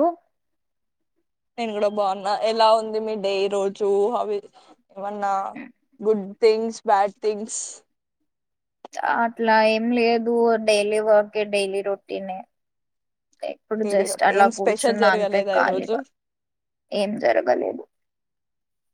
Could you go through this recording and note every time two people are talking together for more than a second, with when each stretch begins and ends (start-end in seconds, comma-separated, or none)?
13.8-15.9